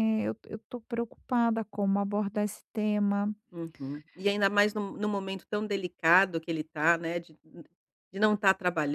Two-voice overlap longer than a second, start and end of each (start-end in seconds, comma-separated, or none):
none